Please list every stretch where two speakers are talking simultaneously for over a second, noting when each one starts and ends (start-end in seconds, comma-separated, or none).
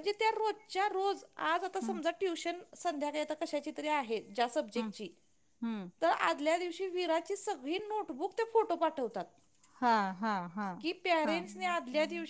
none